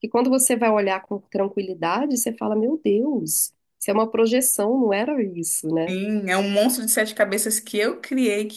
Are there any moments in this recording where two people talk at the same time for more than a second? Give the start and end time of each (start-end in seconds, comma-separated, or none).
none